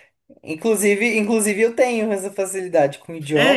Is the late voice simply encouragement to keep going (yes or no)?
no